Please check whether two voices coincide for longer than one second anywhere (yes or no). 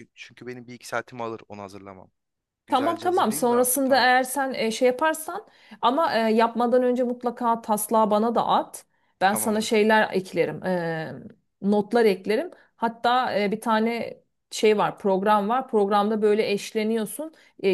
yes